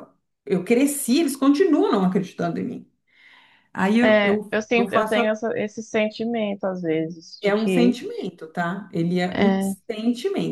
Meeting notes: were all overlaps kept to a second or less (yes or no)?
no